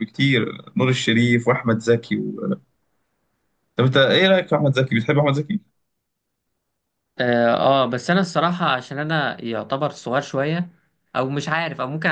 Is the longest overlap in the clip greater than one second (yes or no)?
no